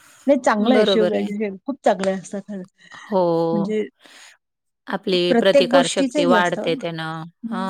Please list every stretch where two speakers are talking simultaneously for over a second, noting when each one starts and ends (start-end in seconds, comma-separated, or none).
5.3-6.8